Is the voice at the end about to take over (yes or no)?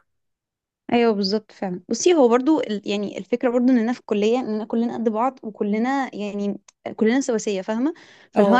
no